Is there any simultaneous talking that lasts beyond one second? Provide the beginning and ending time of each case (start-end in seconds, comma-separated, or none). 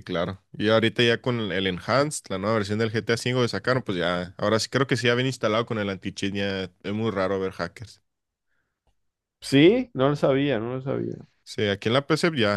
none